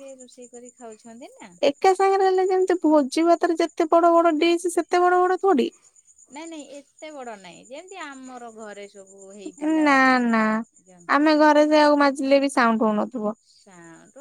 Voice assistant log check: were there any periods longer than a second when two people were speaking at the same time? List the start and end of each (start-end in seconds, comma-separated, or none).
none